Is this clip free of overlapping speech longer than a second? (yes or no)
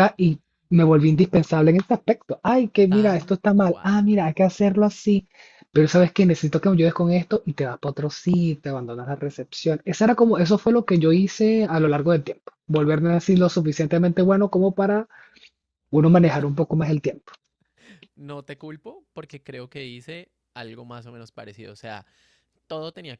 no